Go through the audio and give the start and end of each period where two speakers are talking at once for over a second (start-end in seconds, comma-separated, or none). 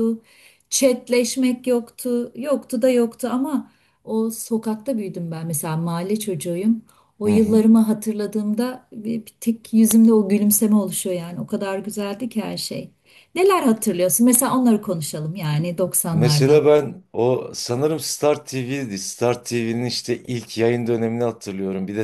none